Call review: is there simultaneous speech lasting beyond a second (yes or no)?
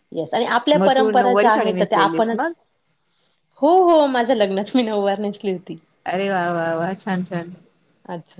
yes